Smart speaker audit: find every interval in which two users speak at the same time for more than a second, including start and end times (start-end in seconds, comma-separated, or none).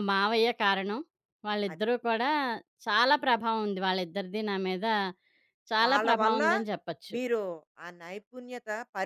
none